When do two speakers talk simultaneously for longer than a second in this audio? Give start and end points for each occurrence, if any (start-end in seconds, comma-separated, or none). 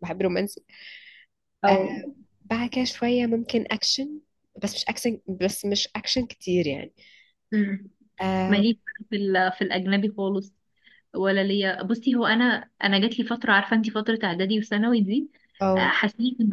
none